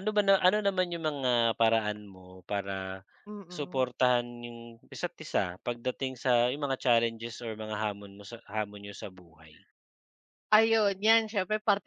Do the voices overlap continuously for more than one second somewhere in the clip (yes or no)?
no